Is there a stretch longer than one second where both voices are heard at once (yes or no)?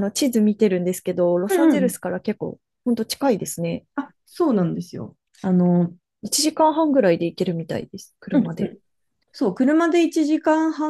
no